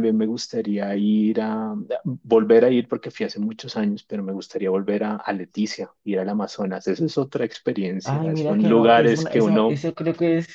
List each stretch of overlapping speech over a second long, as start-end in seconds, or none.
8.0-9.8